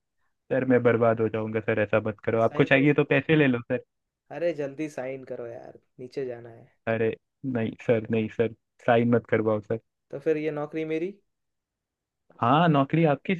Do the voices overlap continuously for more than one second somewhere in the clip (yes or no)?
no